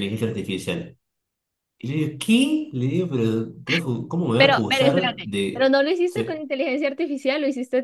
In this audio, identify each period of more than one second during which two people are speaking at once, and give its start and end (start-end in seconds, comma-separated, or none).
4.3-6.4